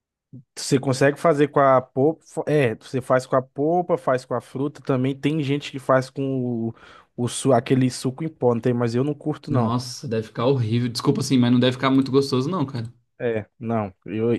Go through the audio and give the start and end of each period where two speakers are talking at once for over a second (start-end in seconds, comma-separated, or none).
none